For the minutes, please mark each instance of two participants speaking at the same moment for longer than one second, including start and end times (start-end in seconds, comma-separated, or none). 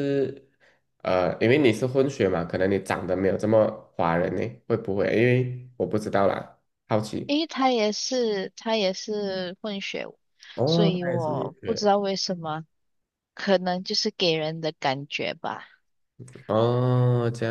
10.7-11.9